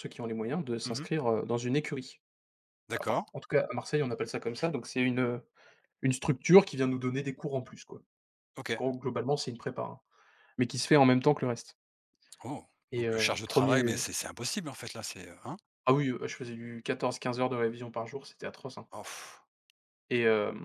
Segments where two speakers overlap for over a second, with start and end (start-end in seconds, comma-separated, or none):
none